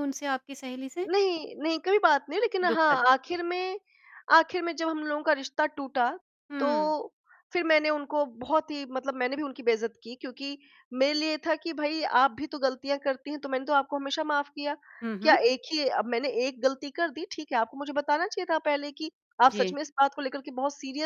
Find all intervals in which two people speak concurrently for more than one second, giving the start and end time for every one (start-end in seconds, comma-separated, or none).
none